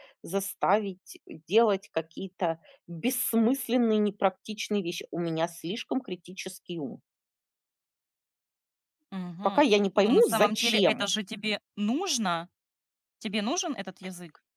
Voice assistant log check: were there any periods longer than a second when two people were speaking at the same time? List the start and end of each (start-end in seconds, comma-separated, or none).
9.4-11.1